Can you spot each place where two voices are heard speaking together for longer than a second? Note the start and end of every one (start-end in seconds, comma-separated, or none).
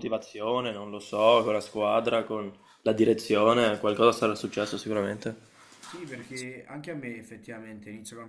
none